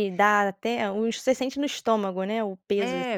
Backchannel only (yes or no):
no